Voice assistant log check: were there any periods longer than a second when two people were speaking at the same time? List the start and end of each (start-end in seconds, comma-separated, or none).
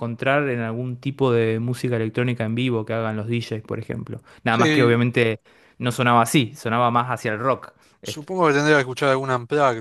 none